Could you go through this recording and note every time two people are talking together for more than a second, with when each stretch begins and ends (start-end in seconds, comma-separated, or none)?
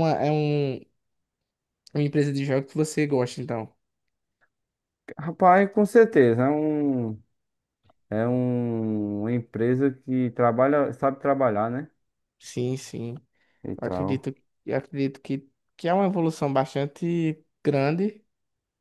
none